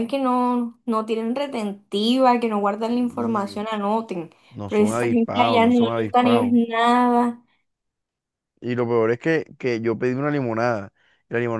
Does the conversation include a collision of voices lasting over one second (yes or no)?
yes